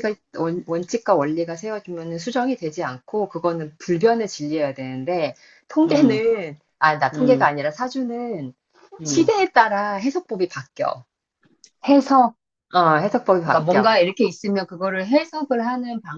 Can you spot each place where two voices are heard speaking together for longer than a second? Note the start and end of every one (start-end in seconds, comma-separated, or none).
none